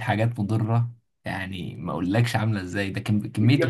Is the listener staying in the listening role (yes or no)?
no